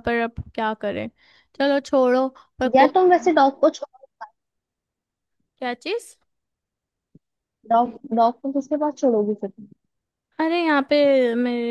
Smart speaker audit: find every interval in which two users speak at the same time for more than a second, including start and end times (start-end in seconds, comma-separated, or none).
none